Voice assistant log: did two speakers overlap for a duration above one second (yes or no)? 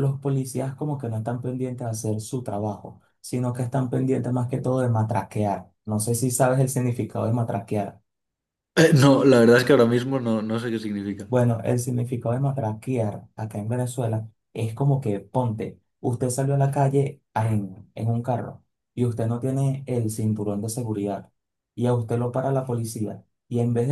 no